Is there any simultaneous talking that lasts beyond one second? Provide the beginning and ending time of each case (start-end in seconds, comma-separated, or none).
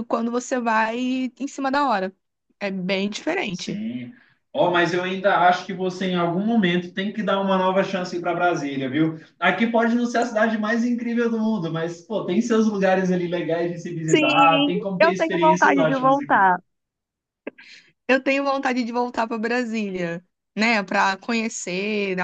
14.1-16.5